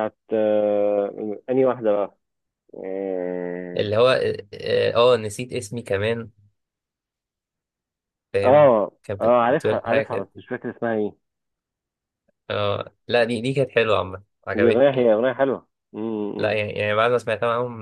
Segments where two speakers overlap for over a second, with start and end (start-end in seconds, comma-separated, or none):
8.4-10.3